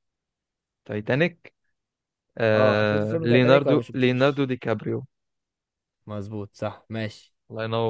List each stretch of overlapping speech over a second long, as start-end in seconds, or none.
2.5-4.5